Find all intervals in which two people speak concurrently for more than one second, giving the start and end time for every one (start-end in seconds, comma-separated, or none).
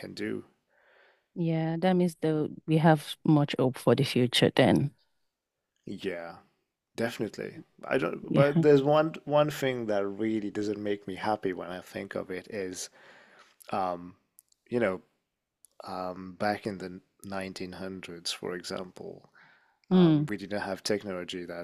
none